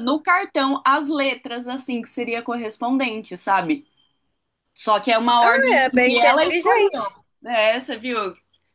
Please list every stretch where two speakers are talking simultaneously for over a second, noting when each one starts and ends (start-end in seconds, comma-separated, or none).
5.4-6.9